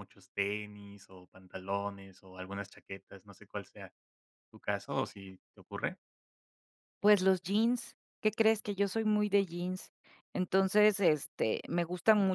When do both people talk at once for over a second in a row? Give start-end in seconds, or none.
none